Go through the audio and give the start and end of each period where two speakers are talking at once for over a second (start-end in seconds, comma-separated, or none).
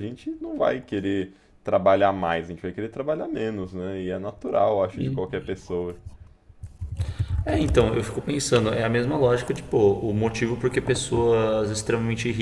none